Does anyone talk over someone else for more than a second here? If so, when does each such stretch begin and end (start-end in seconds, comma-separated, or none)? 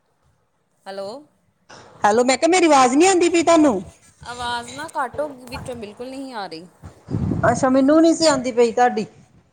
none